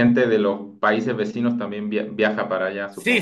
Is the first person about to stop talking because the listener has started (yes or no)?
yes